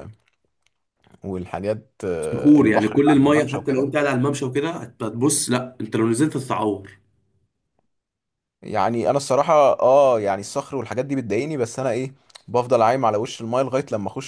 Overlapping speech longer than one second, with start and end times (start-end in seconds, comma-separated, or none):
2.2-3.9